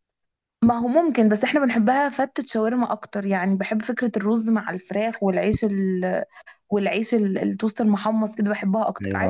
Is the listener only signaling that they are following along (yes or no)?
yes